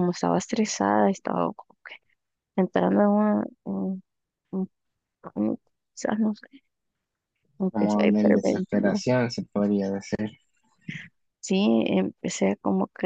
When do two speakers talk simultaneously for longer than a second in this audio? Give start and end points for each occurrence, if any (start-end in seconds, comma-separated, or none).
7.7-9.0